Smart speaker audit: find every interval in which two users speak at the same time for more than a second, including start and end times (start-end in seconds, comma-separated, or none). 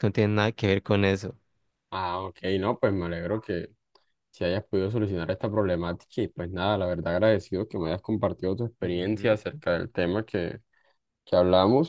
none